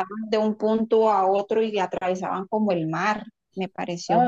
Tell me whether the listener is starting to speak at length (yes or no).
yes